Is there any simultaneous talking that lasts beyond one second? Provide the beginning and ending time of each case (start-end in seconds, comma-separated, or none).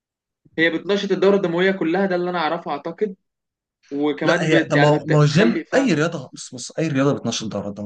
4.2-5.9